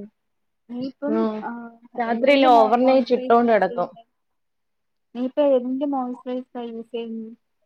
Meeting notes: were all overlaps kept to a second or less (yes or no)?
no